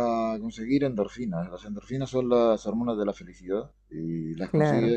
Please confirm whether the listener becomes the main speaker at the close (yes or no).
no